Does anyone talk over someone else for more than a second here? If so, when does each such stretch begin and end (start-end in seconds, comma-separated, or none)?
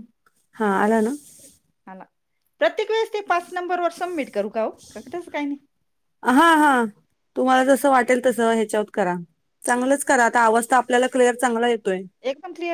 none